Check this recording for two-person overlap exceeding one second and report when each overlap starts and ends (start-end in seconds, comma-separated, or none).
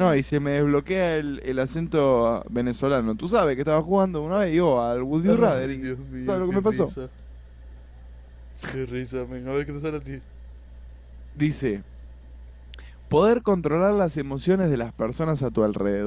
5.2-6.9